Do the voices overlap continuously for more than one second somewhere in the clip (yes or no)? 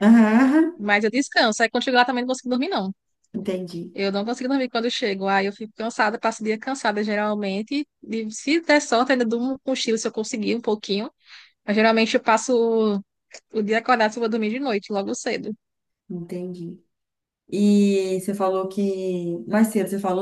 no